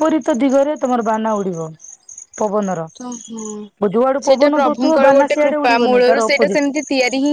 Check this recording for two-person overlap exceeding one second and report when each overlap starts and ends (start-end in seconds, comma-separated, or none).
4.3-6.6